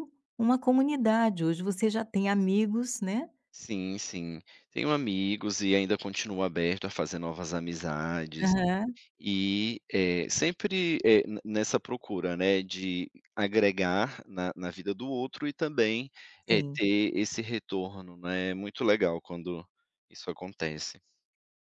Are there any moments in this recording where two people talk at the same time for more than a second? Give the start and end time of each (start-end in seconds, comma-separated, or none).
none